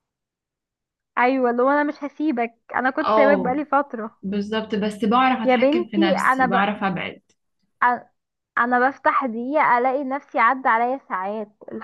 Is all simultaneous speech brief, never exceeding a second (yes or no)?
no